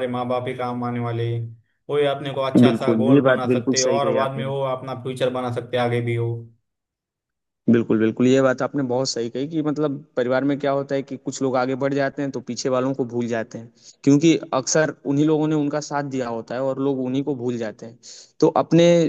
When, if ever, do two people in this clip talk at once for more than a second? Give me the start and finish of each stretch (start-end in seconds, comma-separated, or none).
2.6-4.5